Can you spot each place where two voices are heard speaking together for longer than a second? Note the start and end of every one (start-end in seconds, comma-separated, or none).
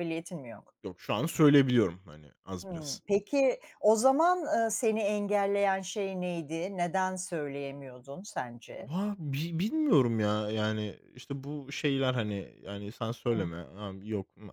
none